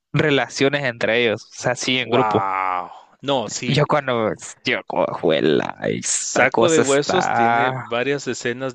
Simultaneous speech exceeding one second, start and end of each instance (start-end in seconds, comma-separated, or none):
6.0-7.8